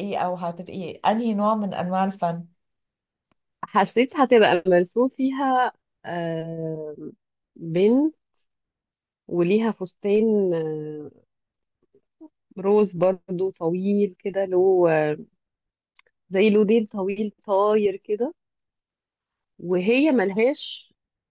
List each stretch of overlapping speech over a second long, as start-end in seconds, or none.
none